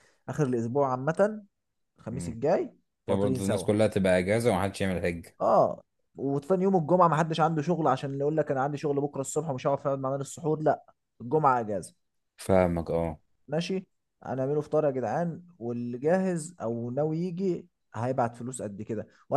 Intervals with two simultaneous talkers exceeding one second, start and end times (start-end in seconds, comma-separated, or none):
none